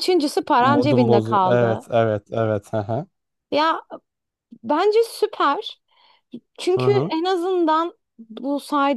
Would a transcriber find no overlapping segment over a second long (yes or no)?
no